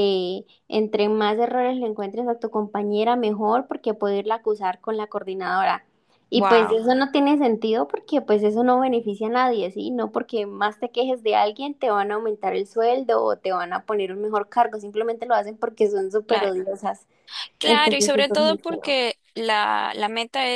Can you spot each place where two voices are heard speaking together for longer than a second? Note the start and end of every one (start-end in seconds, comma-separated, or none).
17.6-19.0